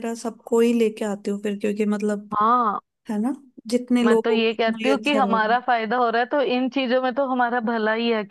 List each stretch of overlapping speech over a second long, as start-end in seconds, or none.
4.0-5.5